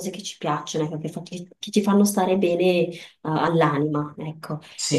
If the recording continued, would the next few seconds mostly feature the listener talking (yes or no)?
no